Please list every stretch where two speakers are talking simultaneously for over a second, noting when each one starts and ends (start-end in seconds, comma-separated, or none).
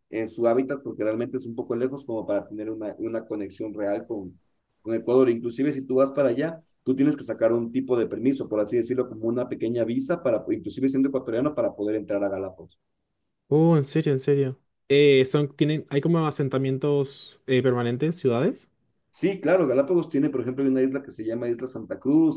none